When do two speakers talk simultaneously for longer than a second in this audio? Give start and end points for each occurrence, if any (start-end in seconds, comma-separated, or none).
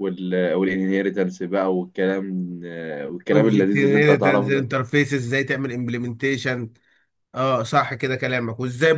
3.3-4.7